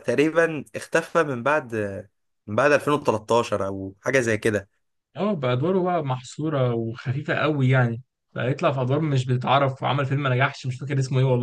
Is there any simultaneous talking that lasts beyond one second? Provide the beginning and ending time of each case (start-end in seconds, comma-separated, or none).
none